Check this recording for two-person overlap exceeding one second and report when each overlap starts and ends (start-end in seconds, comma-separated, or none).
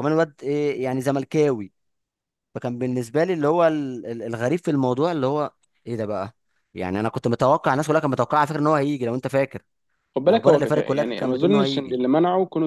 10.3-12.0